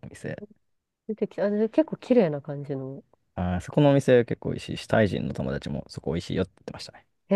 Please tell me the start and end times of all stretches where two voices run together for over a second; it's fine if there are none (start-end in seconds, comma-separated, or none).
none